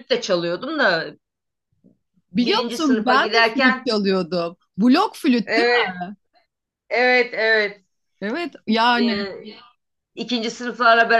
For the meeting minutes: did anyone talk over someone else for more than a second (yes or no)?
yes